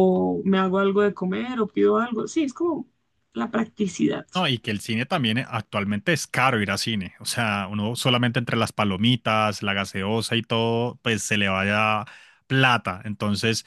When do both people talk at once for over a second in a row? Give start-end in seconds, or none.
none